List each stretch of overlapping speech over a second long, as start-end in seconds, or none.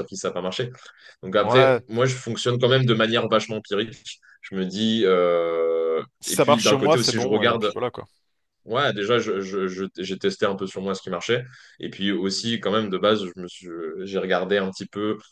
6.2-7.7